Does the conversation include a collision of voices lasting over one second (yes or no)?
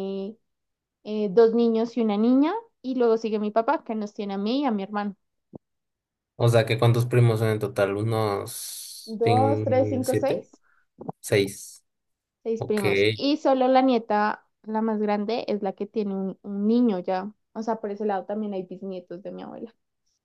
yes